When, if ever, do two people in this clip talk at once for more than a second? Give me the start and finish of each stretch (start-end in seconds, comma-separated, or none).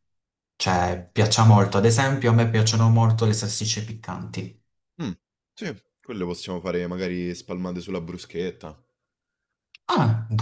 none